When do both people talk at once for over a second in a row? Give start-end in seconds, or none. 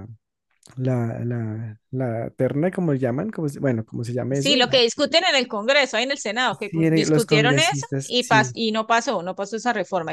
6.5-8.6